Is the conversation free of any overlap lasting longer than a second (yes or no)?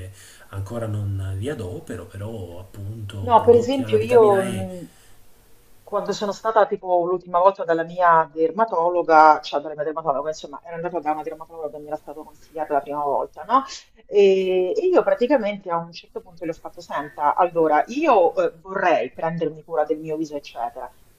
no